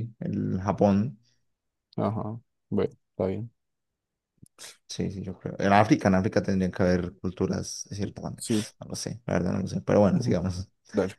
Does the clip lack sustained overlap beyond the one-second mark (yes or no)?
yes